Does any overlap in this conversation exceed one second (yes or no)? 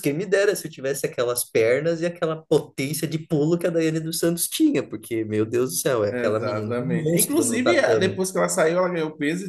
yes